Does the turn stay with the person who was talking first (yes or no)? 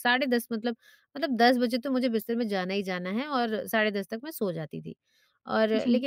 yes